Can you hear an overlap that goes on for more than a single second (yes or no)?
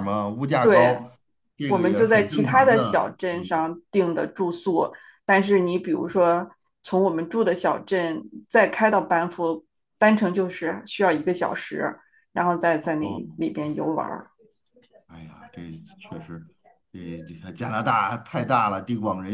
yes